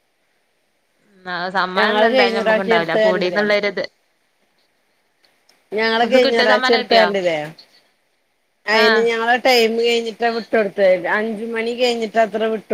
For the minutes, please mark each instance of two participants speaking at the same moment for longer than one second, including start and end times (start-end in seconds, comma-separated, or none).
1.8-3.4